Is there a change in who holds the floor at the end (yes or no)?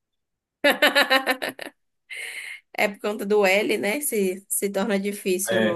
yes